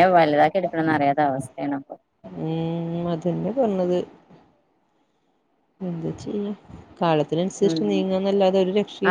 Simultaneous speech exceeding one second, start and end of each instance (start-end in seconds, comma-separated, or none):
none